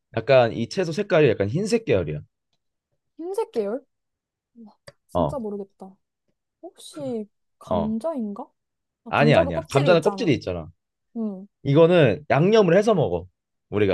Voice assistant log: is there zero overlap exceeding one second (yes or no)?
no